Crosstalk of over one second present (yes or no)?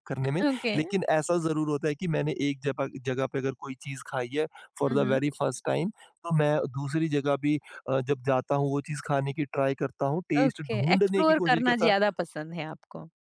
yes